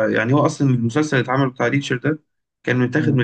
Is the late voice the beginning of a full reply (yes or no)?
no